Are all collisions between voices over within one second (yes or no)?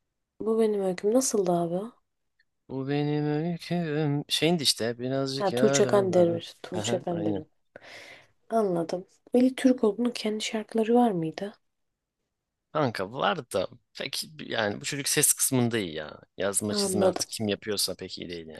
no